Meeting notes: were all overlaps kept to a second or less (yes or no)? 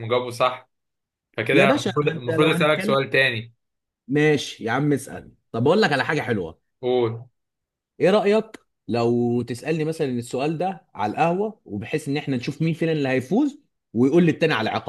no